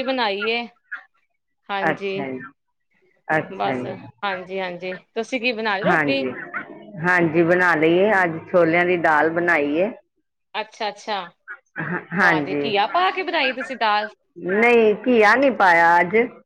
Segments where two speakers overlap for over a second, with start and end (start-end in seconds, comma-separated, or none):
none